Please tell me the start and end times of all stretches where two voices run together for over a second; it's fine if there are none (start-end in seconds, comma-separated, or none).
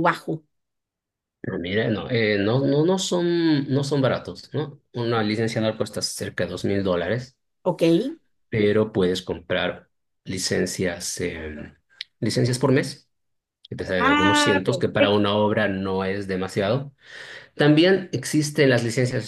14.0-15.3